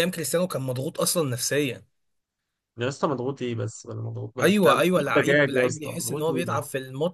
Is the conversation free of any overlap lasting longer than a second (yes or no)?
no